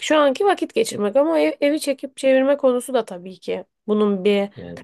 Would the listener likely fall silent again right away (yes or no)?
no